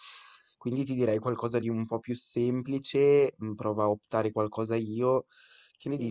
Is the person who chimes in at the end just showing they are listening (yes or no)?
no